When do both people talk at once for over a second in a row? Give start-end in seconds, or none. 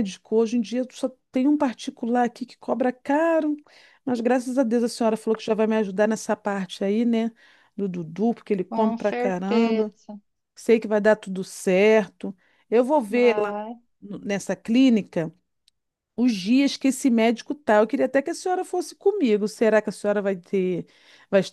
8.7-9.9